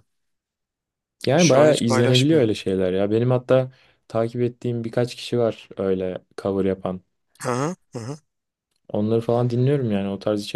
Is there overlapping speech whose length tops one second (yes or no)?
yes